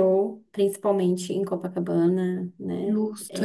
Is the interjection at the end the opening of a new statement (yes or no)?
yes